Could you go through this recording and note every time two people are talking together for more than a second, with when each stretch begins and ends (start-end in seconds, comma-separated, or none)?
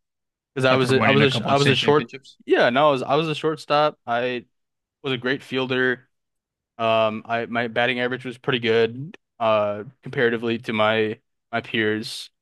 0.7-2.1